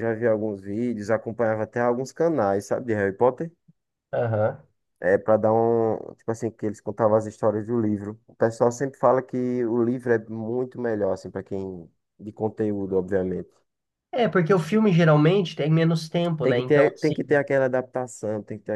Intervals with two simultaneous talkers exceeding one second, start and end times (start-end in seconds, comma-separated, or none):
none